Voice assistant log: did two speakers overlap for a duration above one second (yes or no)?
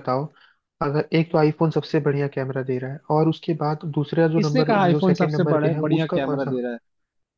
yes